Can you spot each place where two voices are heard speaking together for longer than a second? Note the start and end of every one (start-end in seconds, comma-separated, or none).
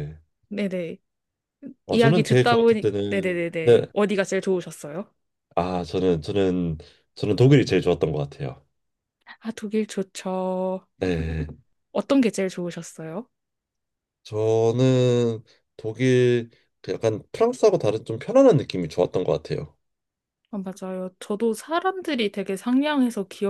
1.9-3.8